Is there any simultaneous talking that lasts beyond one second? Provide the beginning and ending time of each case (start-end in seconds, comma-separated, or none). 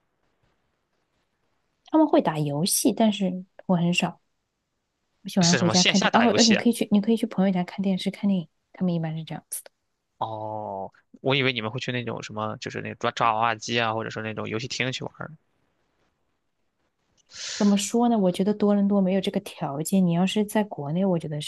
5.4-6.7